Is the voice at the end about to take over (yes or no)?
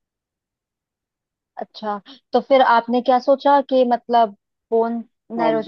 yes